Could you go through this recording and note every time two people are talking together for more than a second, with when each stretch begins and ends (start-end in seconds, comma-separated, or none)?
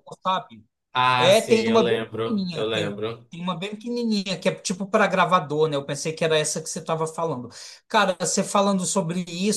1.2-2.9